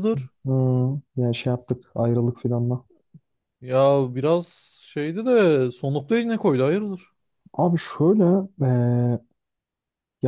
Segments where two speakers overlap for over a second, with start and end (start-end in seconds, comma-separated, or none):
none